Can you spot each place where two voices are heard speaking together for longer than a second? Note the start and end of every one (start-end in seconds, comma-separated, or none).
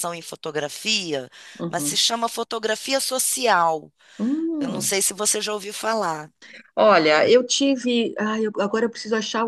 none